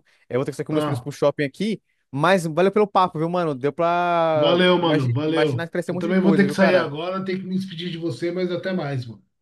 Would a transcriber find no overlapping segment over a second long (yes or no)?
no